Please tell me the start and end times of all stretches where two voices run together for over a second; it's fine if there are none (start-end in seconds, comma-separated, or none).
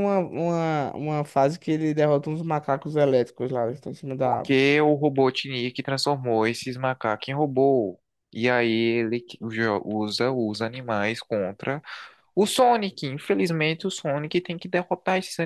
none